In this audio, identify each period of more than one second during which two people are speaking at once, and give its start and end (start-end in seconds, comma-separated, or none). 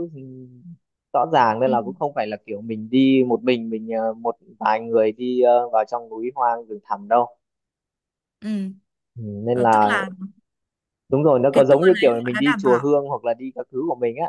11.5-12.9